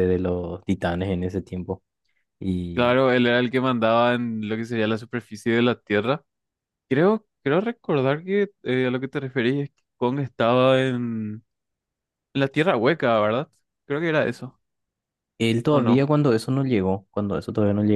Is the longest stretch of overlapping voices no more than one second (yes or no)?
yes